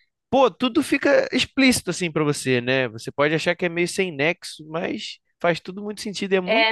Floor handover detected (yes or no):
yes